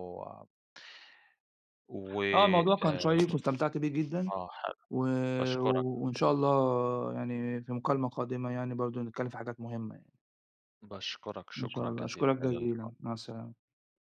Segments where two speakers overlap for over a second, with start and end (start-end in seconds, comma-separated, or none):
11.6-12.9